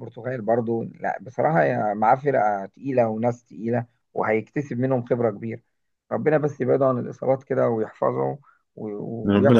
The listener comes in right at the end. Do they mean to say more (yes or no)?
yes